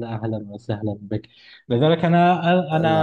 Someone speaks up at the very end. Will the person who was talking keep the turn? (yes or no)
yes